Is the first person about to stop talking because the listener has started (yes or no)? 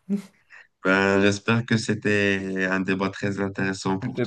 yes